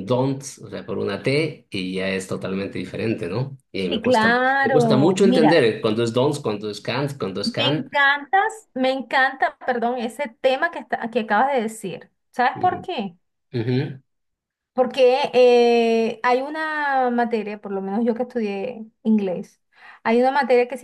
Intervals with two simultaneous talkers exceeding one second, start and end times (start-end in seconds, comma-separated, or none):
3.9-5.7